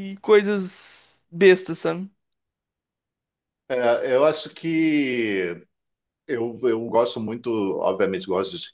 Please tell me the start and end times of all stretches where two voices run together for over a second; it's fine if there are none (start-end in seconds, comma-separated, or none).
none